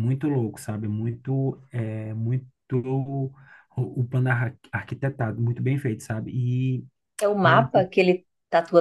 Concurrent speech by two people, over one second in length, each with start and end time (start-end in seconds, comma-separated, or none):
none